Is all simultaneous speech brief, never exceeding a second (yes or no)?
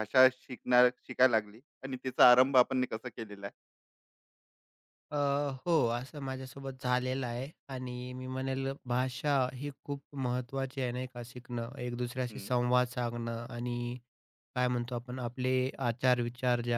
yes